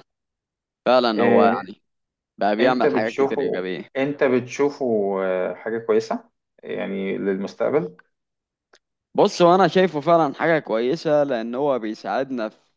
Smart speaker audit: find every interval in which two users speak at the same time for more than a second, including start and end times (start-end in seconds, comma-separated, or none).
2.6-3.9